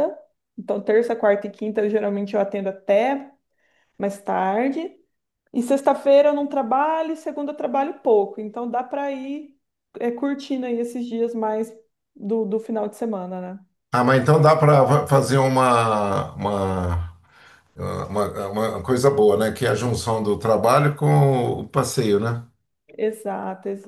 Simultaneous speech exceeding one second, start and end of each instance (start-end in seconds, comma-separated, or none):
none